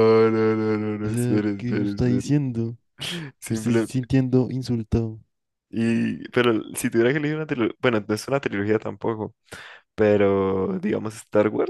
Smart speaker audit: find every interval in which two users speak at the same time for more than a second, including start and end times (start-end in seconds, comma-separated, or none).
1.0-2.3